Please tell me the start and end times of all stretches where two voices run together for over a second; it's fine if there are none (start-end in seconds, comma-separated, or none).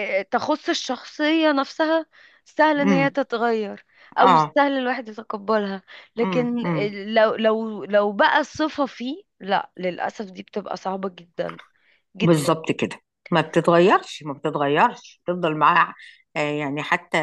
none